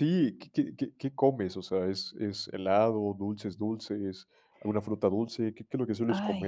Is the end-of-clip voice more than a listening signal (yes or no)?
yes